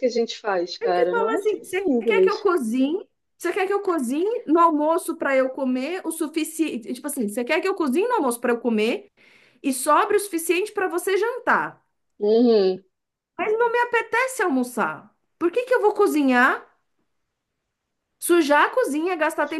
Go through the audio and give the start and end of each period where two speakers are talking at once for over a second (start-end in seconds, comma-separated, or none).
0.8-2.5